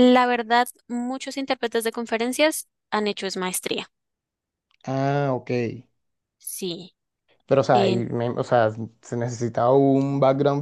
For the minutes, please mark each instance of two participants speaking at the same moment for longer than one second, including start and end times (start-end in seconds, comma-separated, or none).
none